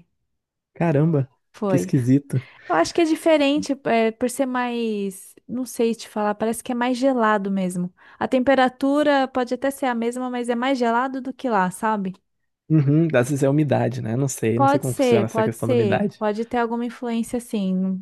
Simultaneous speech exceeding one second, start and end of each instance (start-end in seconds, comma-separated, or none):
14.6-16.2